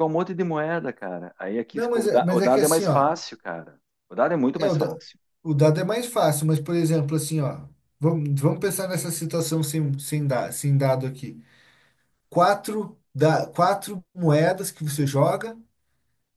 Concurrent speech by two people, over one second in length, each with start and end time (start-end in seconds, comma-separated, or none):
1.7-3.1